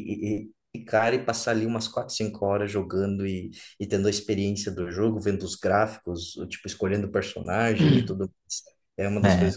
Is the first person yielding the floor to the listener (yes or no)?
yes